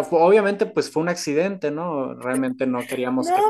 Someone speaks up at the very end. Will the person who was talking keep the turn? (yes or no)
no